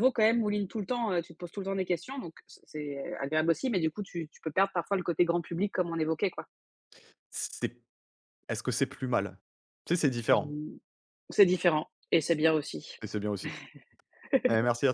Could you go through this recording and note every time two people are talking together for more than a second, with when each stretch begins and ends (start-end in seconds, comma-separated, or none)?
none